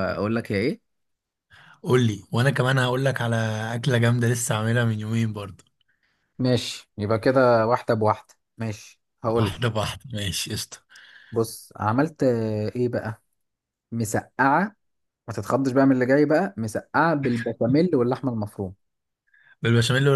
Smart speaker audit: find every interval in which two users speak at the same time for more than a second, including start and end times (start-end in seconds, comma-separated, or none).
none